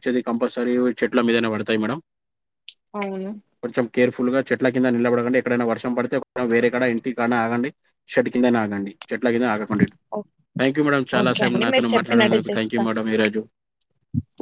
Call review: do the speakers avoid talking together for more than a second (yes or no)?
no